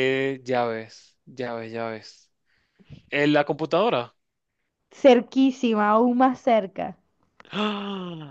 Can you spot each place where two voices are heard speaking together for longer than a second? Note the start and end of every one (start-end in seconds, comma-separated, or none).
none